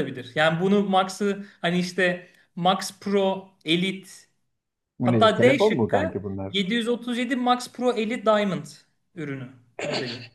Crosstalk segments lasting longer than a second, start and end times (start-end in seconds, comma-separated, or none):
5.0-6.5